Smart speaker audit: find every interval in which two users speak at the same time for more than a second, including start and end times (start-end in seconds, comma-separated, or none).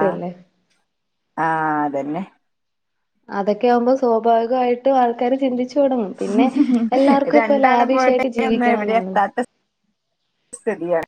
7.4-9.1